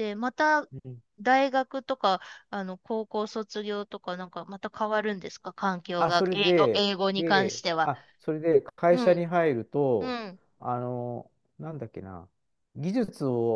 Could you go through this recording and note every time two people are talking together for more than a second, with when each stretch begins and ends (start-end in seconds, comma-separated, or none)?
6.0-7.9